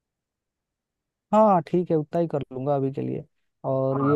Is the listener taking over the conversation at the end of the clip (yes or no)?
no